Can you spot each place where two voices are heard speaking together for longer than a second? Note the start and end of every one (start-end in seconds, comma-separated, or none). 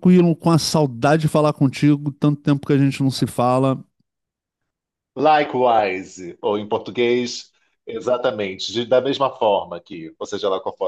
none